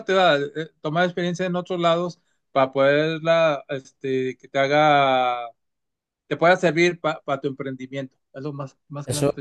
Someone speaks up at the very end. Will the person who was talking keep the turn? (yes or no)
no